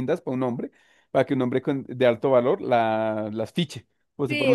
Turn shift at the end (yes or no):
yes